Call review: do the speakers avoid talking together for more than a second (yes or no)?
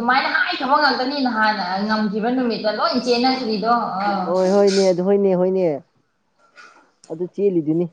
yes